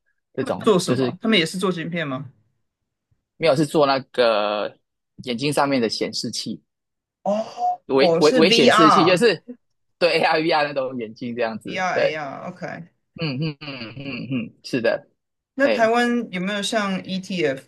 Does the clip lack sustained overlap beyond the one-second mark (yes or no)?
no